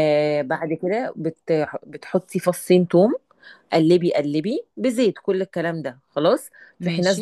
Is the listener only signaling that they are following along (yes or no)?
yes